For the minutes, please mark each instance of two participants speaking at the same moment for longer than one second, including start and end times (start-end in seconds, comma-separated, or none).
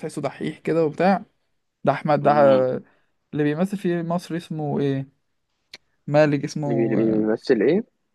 none